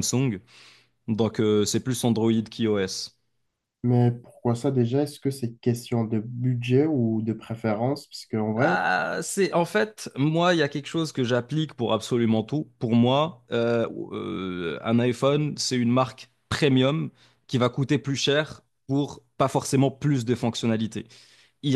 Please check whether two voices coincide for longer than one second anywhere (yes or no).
no